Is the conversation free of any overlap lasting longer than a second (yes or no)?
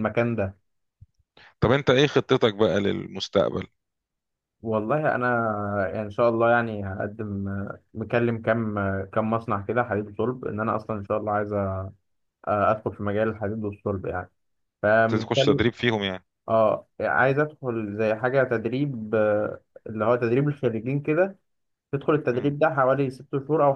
yes